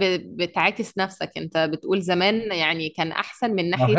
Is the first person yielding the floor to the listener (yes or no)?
yes